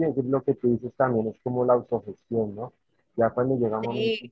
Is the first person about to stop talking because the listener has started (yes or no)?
no